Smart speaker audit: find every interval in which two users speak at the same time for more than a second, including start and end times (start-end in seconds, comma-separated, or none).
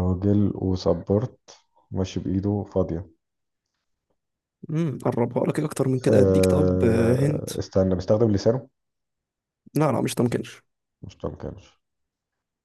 6.1-7.5